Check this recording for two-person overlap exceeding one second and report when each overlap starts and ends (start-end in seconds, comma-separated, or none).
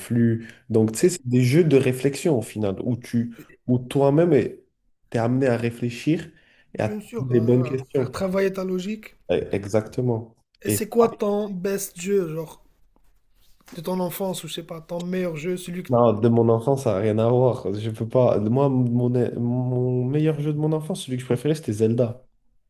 6.8-8.2